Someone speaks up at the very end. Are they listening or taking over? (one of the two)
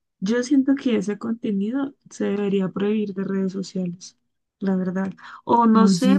listening